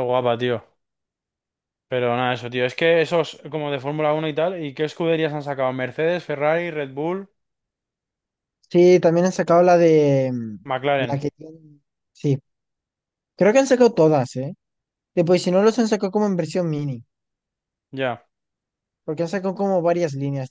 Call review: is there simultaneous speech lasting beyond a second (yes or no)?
no